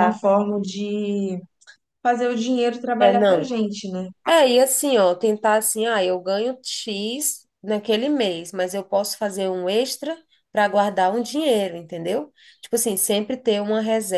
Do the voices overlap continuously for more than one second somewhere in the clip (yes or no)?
no